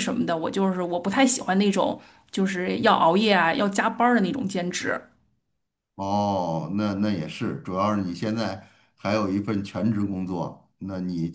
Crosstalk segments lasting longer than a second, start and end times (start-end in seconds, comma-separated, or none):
none